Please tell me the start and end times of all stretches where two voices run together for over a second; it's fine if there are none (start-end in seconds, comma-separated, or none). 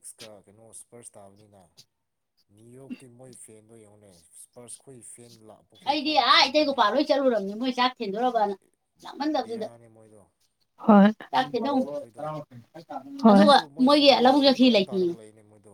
13.3-15.1